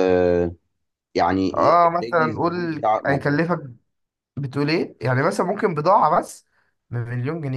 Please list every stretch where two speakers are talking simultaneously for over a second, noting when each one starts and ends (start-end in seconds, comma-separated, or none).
2.0-3.4